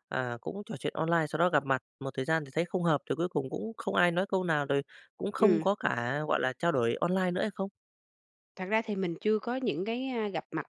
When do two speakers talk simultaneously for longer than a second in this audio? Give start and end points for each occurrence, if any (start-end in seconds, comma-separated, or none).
none